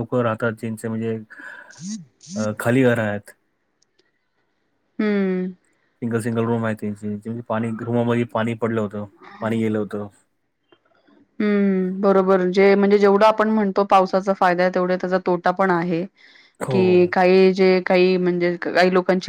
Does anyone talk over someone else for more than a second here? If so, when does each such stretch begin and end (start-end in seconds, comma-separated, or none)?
none